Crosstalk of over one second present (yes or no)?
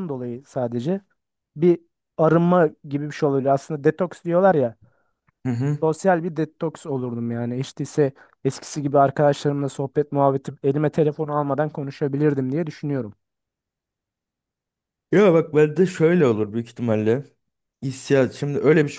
no